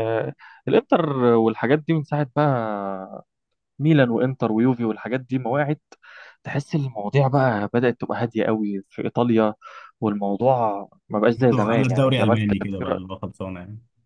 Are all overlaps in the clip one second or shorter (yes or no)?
no